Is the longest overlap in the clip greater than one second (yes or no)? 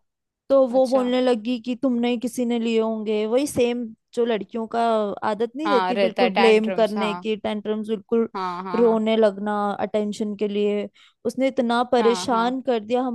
yes